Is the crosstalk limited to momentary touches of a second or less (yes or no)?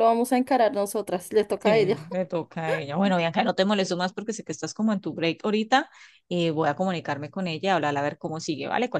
yes